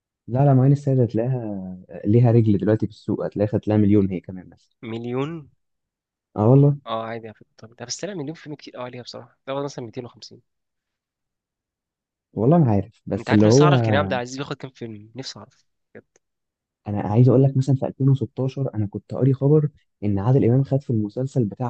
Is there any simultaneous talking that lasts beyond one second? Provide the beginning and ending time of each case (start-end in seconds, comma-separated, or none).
none